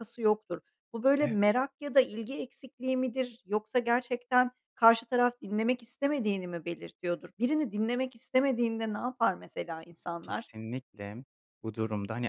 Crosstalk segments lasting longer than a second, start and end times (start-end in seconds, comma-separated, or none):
none